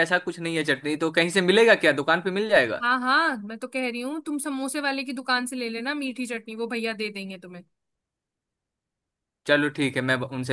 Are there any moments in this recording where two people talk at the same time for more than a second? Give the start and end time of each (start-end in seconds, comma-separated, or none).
none